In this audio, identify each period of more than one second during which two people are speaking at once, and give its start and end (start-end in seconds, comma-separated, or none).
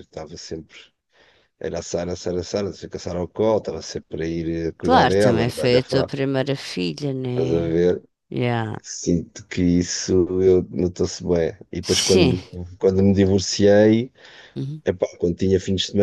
4.8-6.1